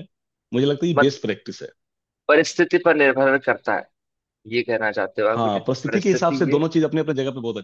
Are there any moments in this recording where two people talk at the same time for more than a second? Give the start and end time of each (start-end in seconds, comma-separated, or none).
5.3-6.6